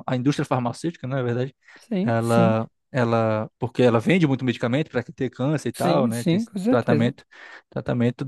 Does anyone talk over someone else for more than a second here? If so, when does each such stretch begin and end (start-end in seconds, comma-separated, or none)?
5.7-7.1